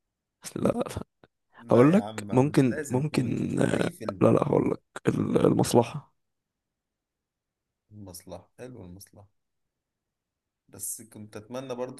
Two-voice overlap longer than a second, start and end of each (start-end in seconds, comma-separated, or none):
1.7-4.2